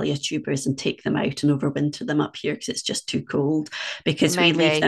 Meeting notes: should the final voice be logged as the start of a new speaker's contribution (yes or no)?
no